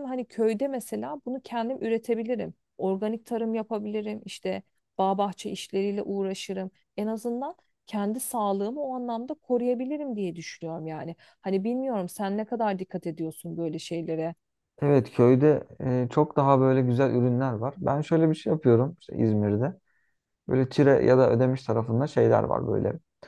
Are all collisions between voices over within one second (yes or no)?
yes